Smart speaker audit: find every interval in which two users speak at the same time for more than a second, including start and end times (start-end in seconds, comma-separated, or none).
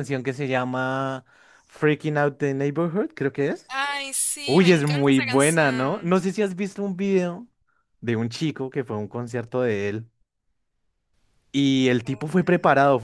4.5-6.1